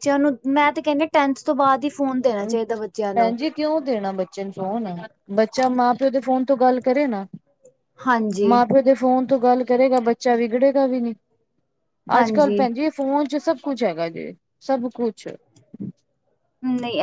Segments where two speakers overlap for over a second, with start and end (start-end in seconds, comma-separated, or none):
none